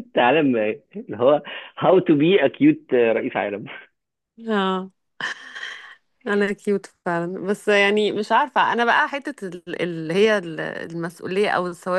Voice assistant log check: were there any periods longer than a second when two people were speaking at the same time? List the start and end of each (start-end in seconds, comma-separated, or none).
none